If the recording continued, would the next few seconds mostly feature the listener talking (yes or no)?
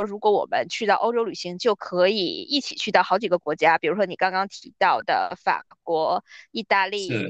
no